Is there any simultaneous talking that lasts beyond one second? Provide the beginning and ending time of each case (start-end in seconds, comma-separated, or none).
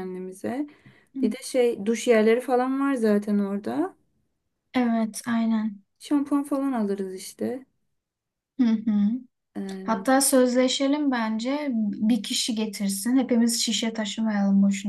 none